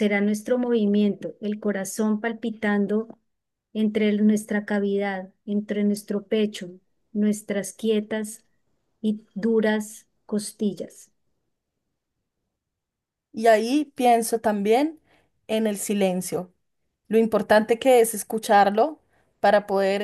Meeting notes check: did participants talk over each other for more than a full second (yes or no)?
no